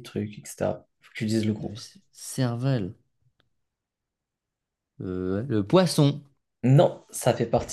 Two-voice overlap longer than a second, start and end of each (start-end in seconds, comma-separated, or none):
none